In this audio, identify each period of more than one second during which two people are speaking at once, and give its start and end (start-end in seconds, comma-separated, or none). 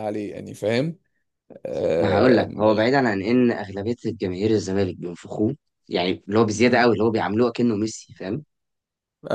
none